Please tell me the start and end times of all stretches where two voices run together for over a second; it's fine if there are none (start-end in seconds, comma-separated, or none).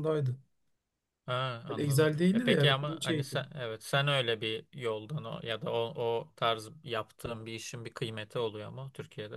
1.7-3.5